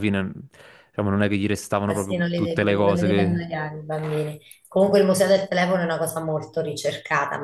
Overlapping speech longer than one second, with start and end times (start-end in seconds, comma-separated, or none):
1.9-3.4